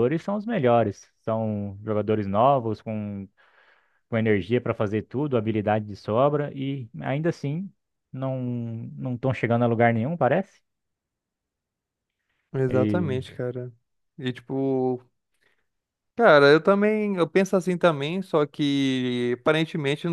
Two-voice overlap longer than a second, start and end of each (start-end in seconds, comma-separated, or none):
none